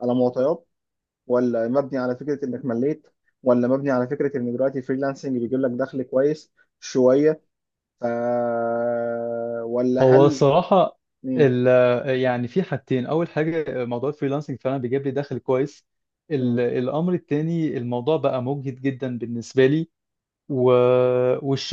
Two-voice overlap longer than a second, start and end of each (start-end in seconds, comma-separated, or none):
none